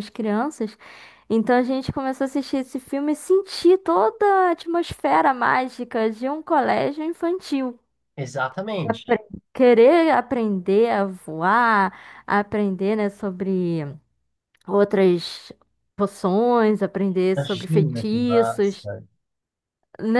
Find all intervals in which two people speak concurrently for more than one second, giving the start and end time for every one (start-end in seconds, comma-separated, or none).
17.4-18.9